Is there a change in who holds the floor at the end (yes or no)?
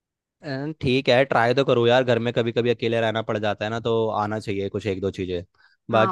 yes